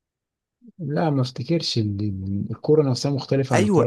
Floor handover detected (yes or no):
yes